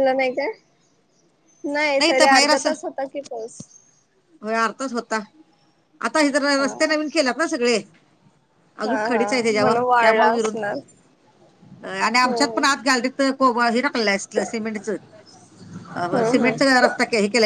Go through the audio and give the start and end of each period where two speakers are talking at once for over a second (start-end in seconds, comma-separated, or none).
8.8-10.6